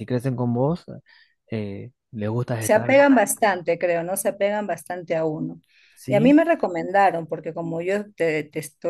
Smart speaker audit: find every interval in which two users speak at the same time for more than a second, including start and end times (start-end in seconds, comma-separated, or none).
none